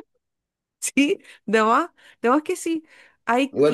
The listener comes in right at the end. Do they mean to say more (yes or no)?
yes